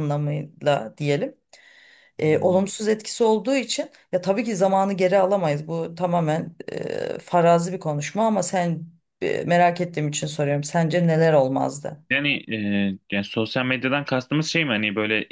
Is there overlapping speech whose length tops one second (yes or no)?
no